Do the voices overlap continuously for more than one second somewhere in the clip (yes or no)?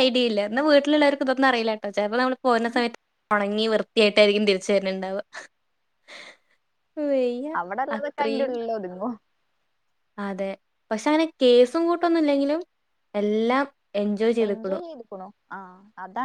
no